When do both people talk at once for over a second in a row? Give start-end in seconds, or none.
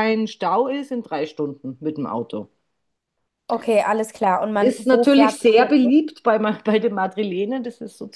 4.6-5.9